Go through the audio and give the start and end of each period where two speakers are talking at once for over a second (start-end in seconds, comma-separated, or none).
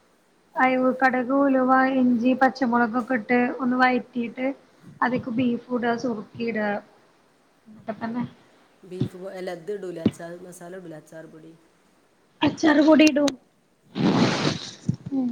none